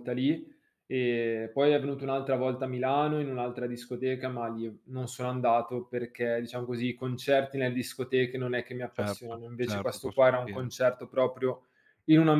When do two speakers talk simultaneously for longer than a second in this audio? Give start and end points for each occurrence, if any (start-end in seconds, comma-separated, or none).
8.9-10.7